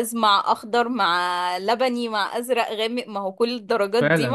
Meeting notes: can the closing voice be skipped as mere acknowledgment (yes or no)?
no